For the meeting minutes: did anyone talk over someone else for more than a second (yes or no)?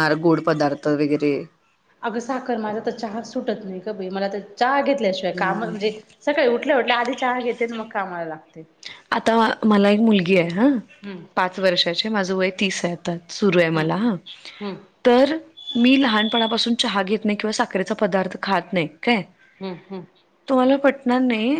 no